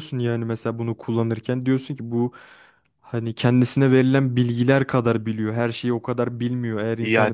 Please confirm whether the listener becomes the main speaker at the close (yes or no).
yes